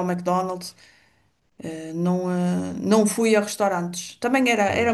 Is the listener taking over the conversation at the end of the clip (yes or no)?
no